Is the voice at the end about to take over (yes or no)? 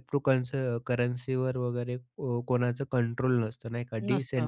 yes